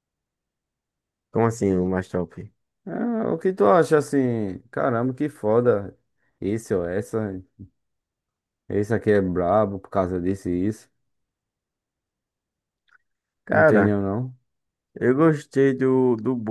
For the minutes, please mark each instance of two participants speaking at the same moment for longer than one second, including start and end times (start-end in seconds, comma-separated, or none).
none